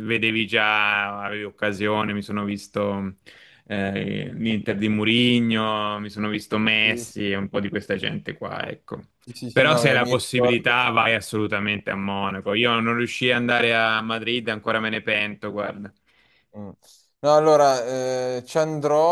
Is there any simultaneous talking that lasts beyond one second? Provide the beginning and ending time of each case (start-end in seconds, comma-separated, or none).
9.5-10.8